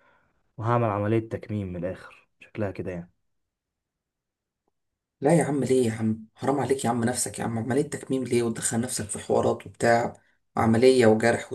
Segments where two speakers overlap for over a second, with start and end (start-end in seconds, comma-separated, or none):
none